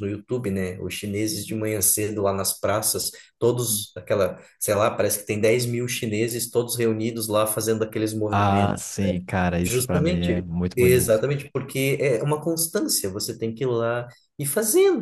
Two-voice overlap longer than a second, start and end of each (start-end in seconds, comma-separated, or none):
9.6-11.2